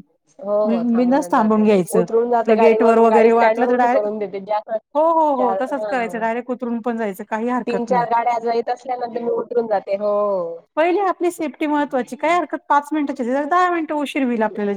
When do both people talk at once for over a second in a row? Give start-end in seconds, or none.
0.7-4.1